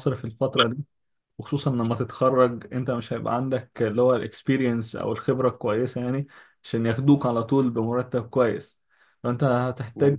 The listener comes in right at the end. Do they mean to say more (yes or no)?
no